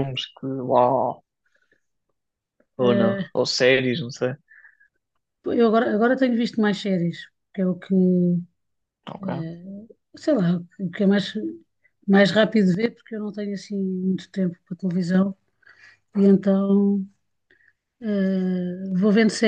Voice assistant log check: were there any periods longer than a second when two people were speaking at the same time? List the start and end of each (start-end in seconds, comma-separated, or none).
none